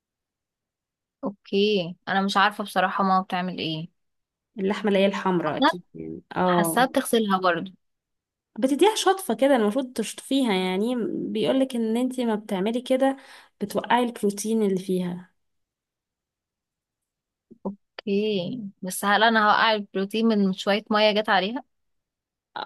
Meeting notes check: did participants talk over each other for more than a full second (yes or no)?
no